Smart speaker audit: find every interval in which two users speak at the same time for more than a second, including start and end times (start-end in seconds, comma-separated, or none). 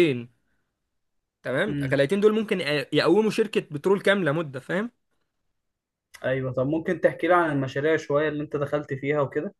none